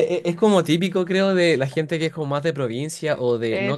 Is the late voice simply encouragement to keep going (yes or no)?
yes